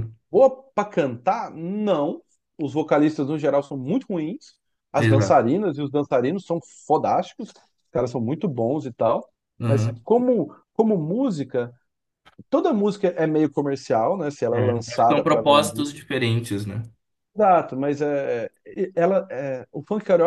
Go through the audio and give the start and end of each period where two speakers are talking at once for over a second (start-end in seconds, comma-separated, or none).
14.5-15.9